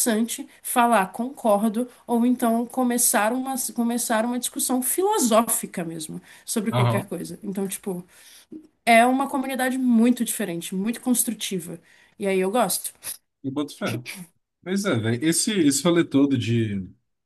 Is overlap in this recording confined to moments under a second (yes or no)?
yes